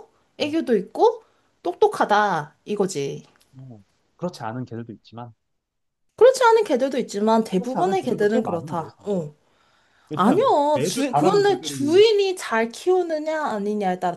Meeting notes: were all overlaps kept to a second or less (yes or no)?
no